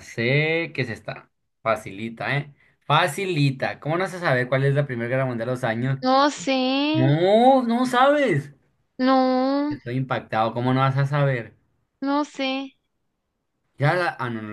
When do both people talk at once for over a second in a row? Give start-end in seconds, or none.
none